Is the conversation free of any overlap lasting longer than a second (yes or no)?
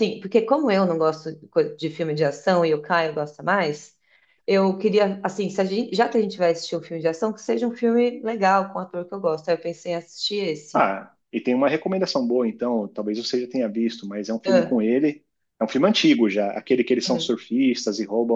yes